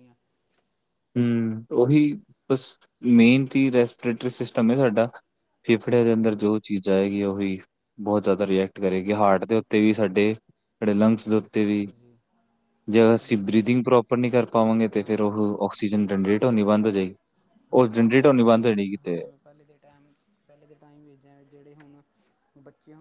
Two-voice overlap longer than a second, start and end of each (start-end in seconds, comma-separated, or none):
17.7-19.2